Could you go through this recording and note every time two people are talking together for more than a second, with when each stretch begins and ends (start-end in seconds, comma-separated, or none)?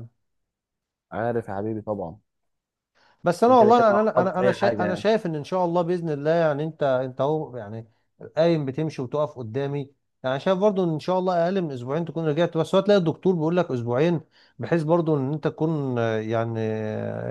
3.5-5.0